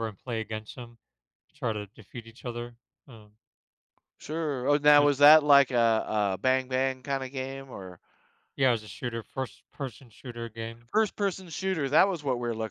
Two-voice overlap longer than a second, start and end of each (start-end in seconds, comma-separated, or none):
none